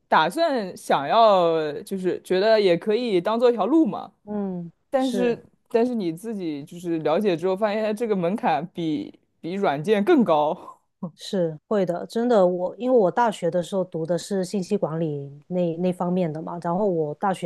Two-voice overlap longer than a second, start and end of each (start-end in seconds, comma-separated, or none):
none